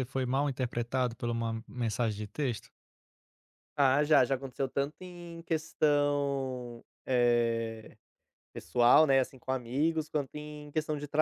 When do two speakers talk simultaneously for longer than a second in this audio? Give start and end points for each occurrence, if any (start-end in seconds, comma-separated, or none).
none